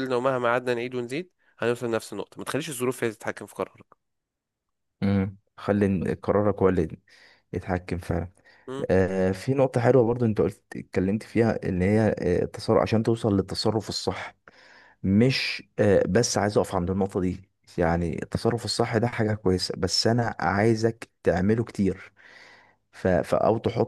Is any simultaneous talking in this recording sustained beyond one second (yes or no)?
no